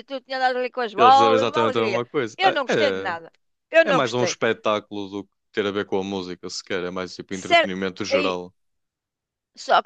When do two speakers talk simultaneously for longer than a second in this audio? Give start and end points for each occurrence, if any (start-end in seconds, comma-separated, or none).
0.9-2.5